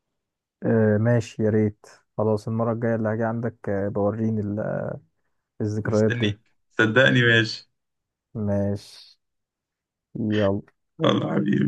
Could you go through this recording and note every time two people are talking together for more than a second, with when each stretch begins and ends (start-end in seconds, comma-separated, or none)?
none